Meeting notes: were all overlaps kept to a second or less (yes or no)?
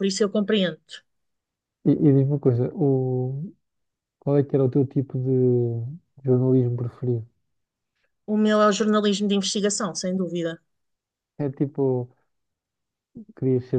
yes